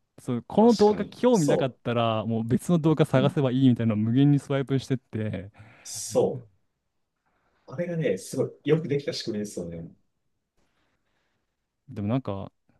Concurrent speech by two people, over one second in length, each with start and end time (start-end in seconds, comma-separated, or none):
0.6-1.8